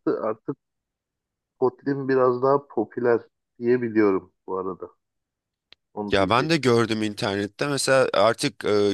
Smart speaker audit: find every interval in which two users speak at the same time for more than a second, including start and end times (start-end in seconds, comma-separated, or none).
none